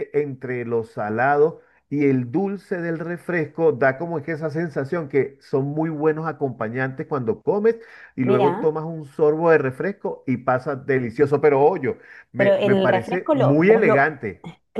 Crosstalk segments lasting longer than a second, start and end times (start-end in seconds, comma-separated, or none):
12.3-14.1